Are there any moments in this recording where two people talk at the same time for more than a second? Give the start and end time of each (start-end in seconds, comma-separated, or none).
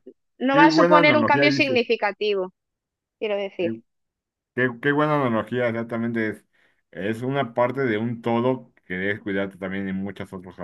0.5-1.8